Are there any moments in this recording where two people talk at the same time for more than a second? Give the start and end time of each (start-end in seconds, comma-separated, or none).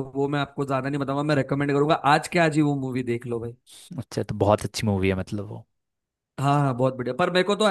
none